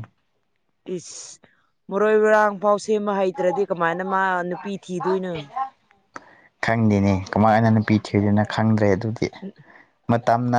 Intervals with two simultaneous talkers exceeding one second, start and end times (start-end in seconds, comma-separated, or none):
none